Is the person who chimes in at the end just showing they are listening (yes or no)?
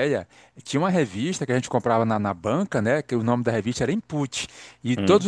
yes